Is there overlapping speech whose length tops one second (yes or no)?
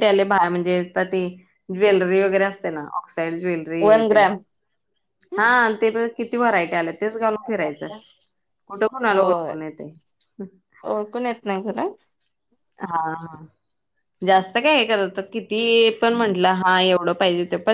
no